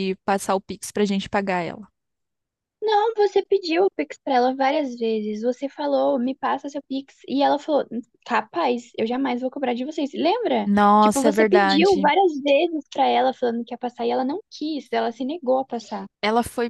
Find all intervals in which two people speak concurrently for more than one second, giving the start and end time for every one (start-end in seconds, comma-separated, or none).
10.7-12.1